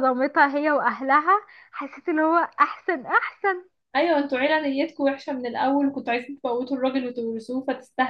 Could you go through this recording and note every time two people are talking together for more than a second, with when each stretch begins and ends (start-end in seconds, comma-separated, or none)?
none